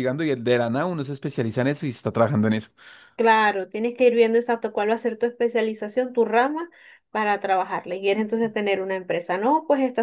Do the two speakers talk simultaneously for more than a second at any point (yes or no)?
no